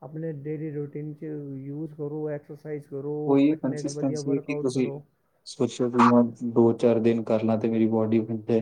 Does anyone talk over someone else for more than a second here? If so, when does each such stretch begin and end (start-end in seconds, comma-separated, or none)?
3.3-4.9